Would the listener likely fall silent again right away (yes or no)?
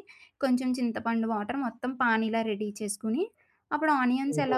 yes